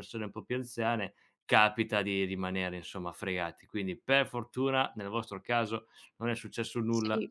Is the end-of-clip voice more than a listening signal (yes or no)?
yes